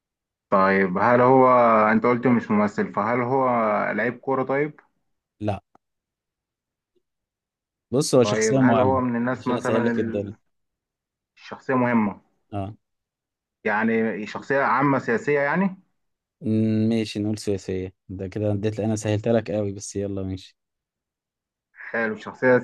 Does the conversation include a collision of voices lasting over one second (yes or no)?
yes